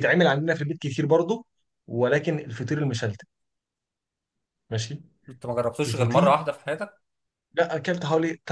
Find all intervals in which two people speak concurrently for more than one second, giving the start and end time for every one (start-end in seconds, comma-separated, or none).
none